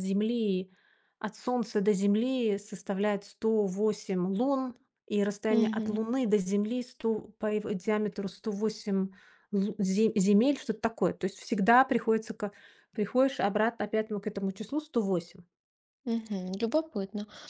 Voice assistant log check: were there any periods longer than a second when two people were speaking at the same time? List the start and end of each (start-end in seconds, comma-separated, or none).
none